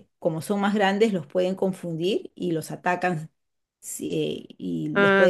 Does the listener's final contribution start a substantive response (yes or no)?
yes